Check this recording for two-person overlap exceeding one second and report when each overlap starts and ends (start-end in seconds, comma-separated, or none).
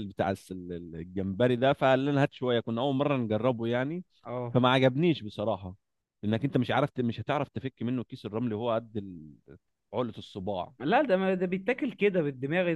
none